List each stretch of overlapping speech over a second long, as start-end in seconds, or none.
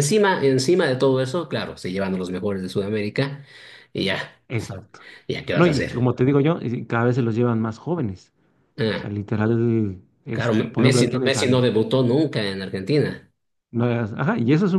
10.3-11.7